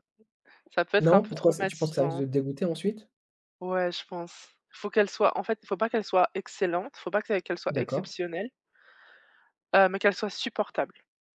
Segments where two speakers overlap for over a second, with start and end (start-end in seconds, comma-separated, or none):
1.0-2.3